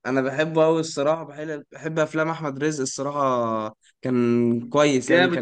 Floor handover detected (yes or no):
yes